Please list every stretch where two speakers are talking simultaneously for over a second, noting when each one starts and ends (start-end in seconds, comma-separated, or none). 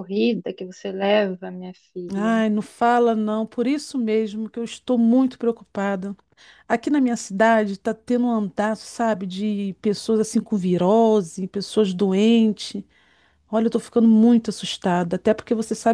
none